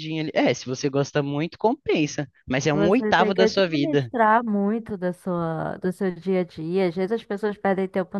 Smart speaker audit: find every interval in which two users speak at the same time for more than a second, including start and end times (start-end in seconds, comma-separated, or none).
2.7-4.1